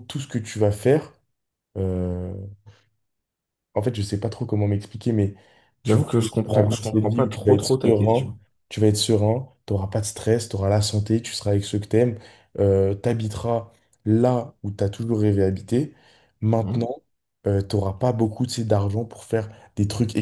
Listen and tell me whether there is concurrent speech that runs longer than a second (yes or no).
yes